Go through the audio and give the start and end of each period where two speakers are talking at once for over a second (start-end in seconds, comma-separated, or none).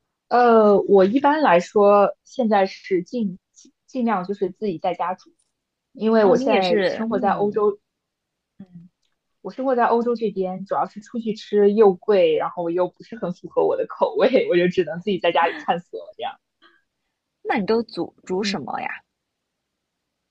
6.2-7.6